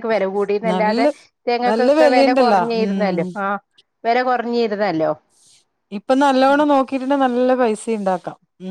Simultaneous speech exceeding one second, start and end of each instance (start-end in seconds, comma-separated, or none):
1.7-3.2